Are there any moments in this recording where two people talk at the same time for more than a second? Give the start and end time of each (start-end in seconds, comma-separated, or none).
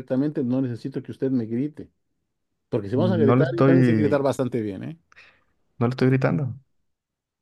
2.9-4.3